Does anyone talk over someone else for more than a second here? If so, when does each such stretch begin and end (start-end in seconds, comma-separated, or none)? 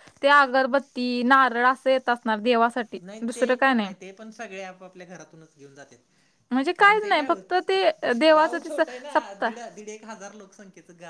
6.8-9.5